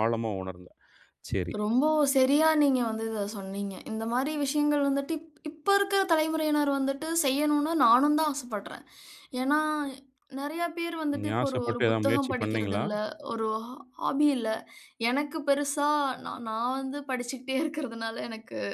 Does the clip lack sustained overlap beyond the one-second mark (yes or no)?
no